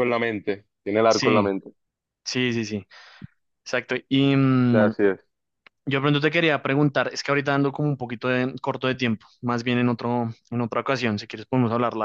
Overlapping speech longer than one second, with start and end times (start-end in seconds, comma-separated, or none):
none